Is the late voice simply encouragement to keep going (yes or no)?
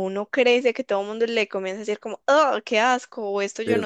yes